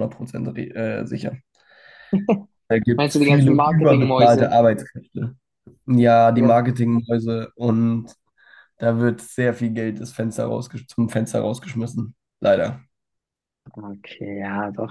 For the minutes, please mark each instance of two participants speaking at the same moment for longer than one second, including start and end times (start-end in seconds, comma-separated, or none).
3.0-4.5